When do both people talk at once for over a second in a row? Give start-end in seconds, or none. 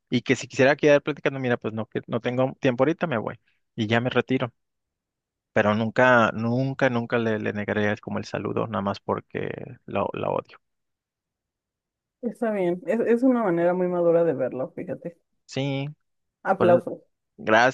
none